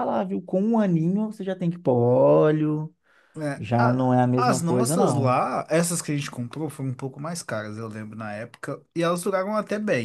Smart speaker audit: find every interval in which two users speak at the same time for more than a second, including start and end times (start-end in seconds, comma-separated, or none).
3.6-5.4